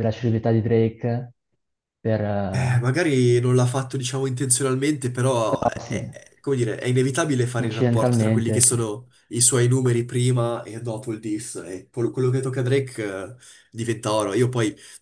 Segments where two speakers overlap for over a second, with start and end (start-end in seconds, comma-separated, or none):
7.6-8.8